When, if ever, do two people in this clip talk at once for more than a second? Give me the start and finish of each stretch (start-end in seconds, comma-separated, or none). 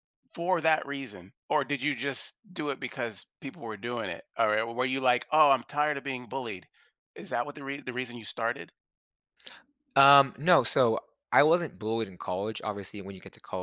none